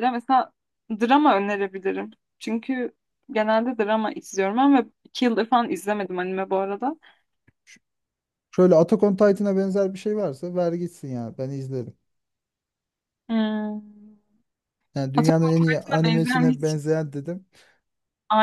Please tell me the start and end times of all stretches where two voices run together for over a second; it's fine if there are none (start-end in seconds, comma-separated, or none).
15.2-16.5